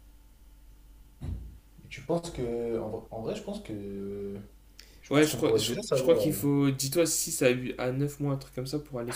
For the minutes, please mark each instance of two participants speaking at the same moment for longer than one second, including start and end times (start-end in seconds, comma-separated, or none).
5.1-6.4